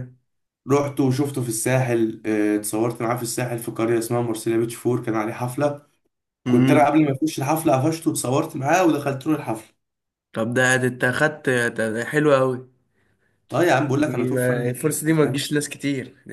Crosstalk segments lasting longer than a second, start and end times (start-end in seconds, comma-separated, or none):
13.9-15.5